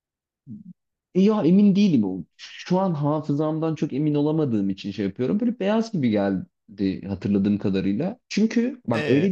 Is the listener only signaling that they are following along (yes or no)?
yes